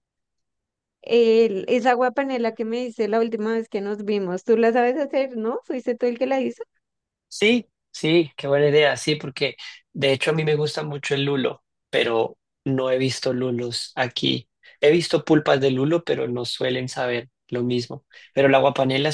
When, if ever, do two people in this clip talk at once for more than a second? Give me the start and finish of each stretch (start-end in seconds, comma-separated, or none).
none